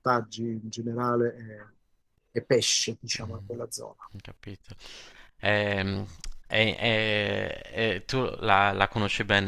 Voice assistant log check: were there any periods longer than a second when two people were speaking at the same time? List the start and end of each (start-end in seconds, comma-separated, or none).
none